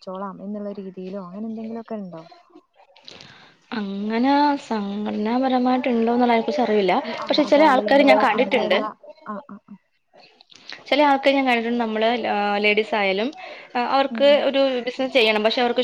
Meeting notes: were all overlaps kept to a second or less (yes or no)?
no